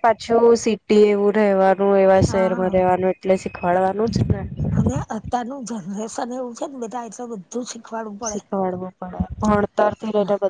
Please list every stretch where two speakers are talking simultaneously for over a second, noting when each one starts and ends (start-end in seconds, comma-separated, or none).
none